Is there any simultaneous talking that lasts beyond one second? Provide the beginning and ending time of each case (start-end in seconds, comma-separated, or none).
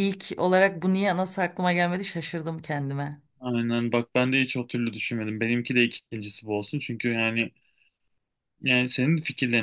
none